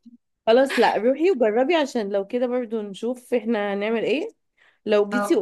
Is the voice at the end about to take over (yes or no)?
no